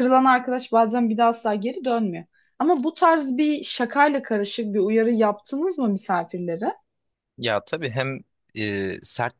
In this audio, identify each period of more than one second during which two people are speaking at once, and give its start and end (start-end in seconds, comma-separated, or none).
none